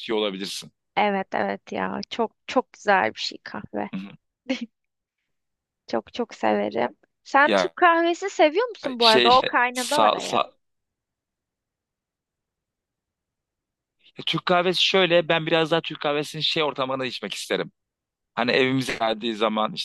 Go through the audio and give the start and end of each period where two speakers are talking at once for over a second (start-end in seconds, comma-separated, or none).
9.0-10.4